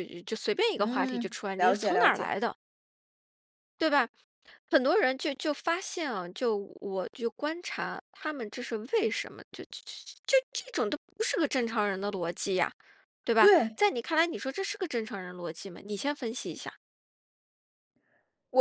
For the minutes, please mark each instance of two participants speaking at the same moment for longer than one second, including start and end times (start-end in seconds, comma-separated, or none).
0.8-2.3